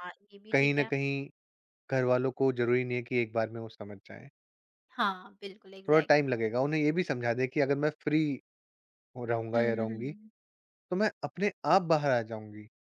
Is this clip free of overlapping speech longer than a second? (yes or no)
yes